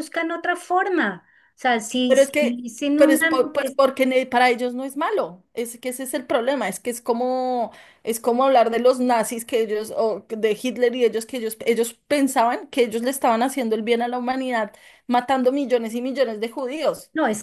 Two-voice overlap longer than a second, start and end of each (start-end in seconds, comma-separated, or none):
2.1-3.8